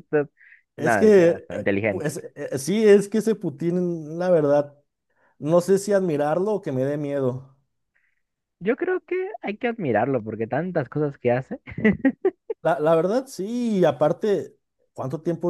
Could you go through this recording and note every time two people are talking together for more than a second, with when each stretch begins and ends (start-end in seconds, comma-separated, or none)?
0.8-2.1